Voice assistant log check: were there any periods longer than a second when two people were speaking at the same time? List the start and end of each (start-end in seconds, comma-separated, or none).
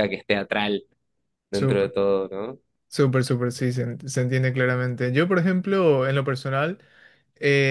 none